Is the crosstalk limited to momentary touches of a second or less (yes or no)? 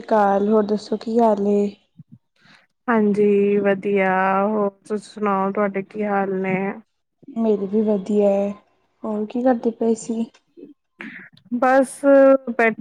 yes